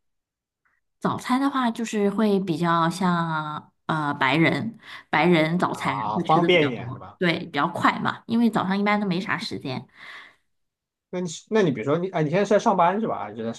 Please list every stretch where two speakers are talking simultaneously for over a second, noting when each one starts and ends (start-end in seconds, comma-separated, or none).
5.7-7.2